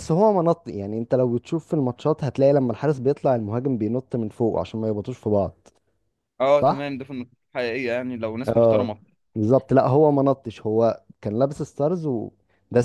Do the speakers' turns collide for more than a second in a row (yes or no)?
no